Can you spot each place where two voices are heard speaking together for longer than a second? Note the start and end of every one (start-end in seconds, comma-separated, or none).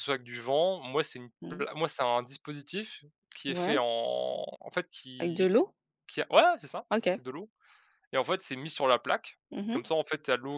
none